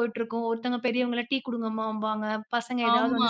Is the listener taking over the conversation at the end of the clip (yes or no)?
yes